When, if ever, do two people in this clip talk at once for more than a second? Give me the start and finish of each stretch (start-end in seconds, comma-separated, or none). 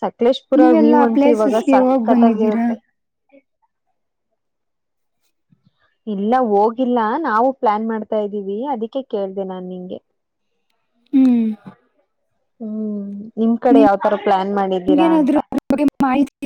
0.6-2.7